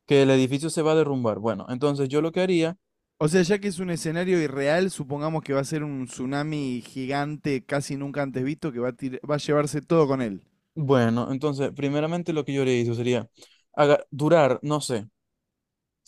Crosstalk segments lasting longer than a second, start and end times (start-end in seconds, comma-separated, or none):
none